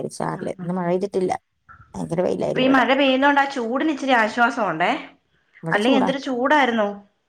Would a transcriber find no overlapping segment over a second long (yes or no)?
yes